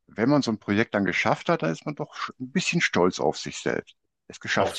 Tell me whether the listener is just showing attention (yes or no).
no